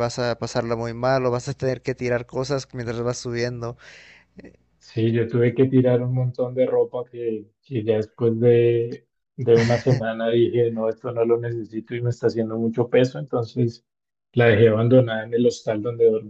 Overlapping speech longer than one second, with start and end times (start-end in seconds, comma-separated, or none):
none